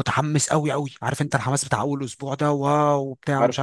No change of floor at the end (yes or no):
yes